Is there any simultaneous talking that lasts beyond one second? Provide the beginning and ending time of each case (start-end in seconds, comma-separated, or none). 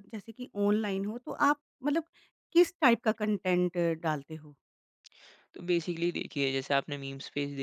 none